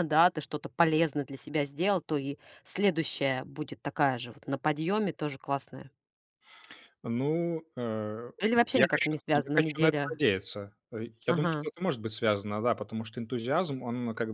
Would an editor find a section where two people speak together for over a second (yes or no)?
yes